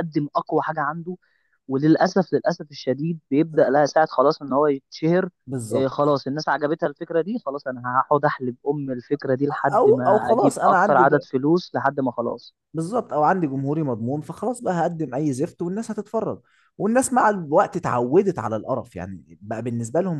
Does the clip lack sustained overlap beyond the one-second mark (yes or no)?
no